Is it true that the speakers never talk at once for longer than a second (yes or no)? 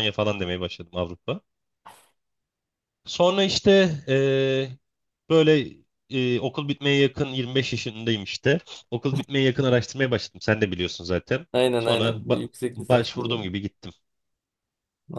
no